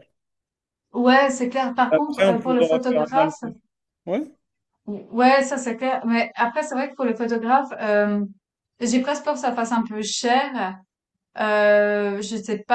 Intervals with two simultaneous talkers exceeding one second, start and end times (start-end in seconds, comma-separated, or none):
1.9-3.3